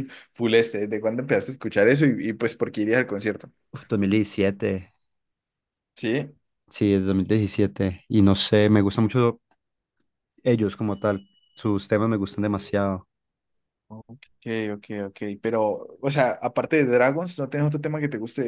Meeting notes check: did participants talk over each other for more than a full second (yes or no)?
no